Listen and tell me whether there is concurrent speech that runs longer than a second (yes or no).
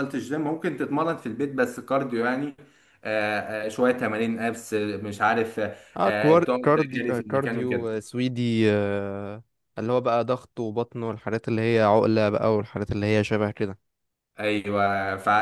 yes